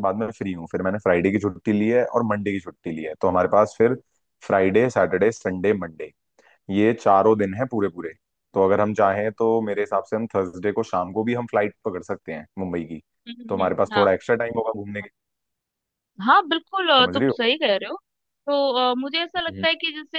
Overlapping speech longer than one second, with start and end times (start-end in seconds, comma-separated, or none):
none